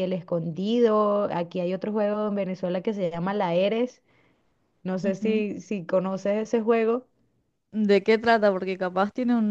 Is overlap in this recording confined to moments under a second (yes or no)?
yes